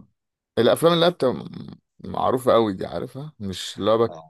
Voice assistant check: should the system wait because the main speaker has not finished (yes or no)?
yes